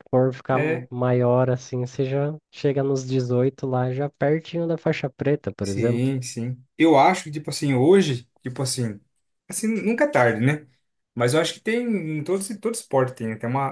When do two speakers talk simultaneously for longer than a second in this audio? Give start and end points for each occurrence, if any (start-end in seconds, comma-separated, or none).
none